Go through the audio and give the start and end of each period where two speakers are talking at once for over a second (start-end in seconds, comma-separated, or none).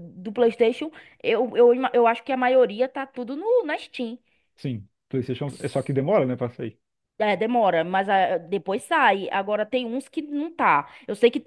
none